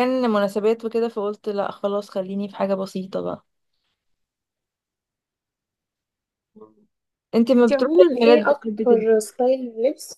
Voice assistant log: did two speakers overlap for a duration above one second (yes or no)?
yes